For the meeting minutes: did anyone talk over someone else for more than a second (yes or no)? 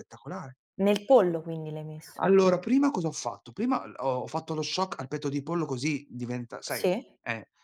no